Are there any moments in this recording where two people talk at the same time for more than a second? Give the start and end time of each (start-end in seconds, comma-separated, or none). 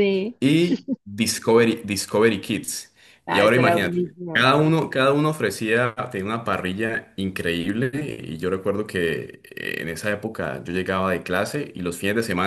3.3-4.5